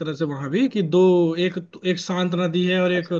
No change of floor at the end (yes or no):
yes